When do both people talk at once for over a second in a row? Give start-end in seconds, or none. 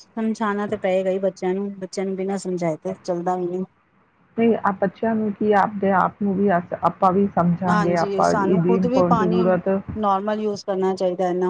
7.7-9.4